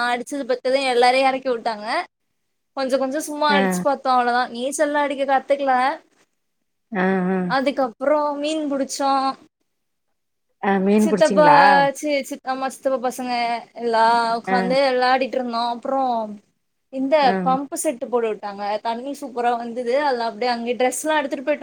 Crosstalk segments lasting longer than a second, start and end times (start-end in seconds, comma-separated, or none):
none